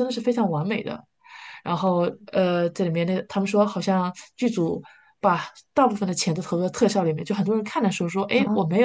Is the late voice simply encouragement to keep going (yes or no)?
yes